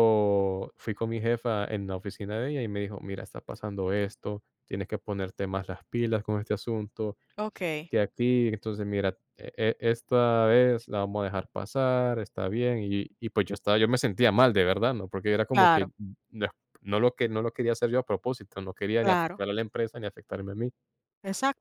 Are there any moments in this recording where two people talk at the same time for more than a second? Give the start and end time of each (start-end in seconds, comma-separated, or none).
none